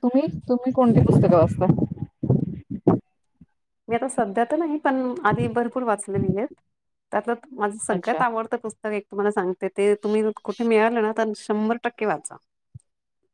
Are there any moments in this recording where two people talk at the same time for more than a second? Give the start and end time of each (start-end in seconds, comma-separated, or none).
none